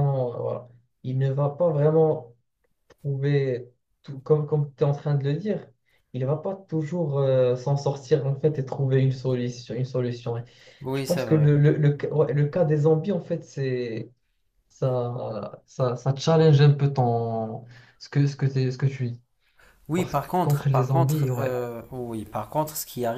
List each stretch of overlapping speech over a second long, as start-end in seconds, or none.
19.9-21.6